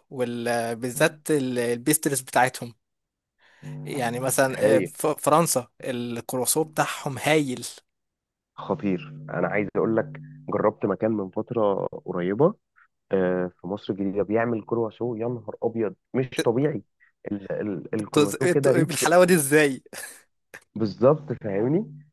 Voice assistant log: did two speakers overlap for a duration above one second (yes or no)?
yes